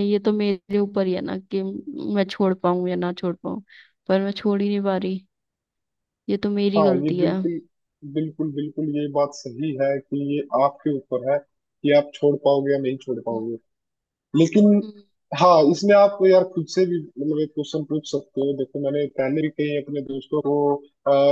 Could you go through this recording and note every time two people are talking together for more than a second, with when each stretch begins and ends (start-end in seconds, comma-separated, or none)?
none